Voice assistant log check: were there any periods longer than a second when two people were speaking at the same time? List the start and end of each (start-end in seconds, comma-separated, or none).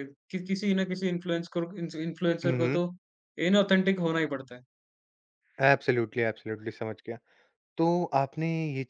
none